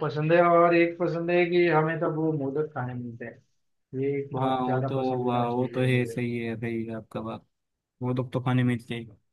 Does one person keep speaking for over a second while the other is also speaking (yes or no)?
yes